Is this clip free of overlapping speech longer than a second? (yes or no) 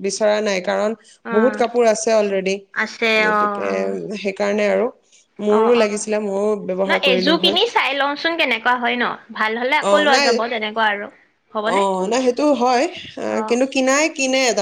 no